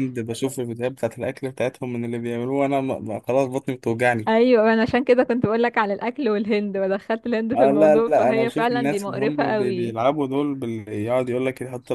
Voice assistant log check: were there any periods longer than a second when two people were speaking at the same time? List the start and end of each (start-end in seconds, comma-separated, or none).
7.5-10.0